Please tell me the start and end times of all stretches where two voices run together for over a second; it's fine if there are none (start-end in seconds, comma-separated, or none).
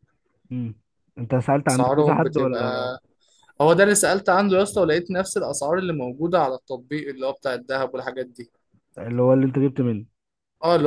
1.7-2.9